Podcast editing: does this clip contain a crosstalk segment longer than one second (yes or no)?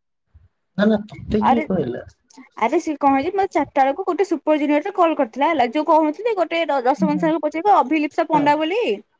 no